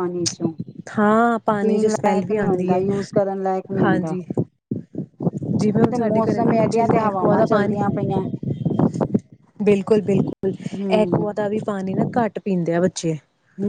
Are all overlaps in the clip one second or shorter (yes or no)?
no